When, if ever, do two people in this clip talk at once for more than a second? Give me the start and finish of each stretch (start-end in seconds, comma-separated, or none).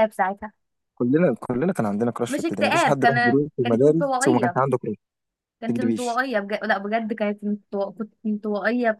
2.3-4.6